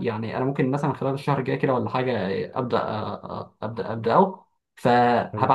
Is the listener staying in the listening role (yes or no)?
yes